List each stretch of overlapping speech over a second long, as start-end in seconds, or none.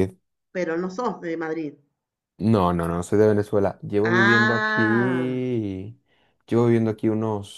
4.0-5.4